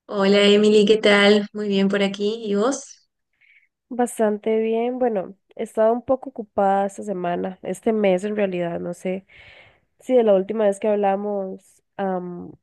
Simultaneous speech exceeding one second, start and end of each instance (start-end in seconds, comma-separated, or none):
none